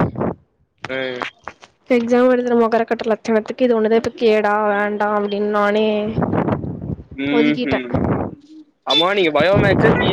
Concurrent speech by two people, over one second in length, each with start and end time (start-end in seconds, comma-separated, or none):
none